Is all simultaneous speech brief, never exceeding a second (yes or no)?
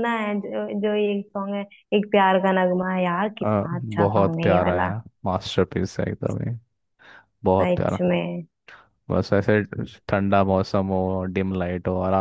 no